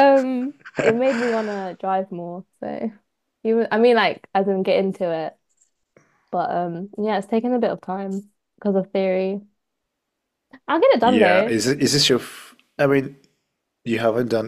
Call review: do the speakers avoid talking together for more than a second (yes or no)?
yes